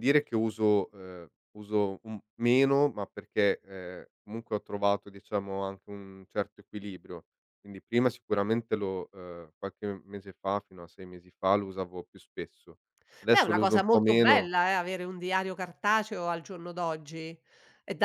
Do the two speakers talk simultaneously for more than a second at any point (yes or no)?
yes